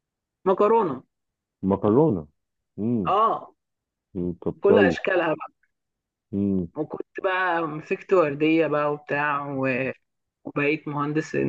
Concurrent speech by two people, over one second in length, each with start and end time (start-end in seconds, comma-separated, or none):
none